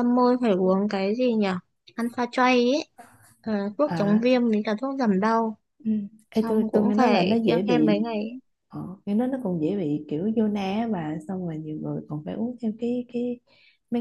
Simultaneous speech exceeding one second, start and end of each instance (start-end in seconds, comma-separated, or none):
6.3-8.1